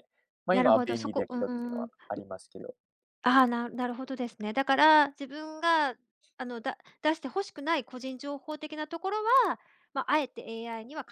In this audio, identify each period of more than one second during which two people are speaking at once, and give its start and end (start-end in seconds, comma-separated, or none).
0.5-1.9